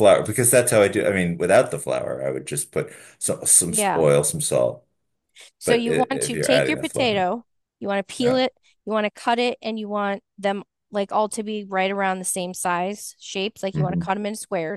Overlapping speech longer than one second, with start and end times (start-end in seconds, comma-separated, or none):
5.6-7.3